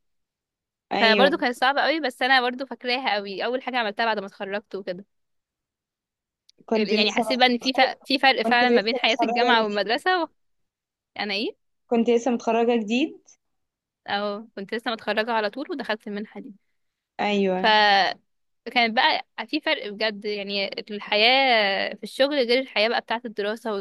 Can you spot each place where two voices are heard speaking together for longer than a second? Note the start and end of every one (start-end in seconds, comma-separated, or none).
8.4-9.9